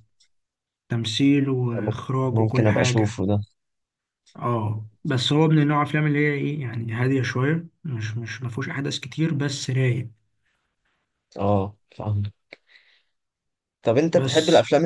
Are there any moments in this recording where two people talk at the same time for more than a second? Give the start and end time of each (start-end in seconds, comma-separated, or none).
1.7-3.2